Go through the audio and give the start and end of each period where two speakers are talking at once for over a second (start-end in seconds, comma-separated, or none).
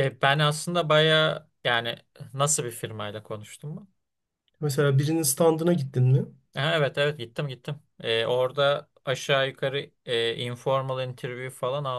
none